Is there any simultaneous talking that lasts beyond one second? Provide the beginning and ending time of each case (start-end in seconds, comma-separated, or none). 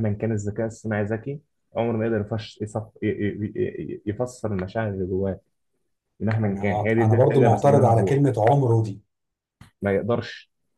6.5-8.2